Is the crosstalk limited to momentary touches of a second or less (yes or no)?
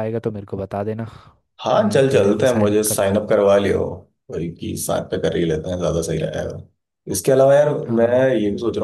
no